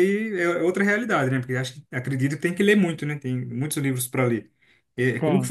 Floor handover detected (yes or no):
no